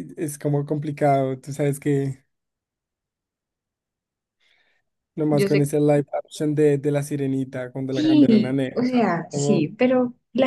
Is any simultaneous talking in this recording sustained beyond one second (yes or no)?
yes